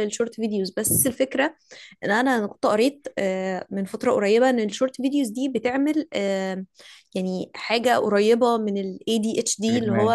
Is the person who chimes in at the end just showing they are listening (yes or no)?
yes